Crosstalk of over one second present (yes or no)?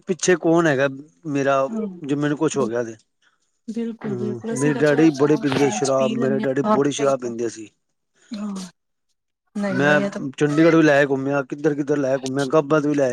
yes